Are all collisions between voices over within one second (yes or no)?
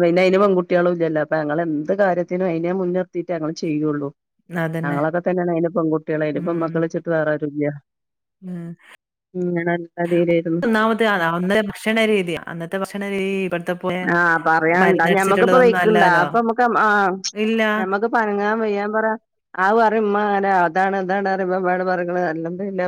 no